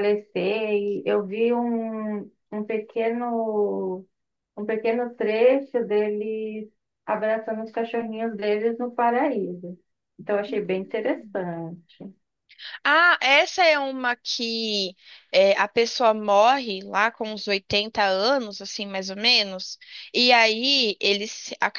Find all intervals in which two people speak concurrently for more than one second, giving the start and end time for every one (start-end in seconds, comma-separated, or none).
none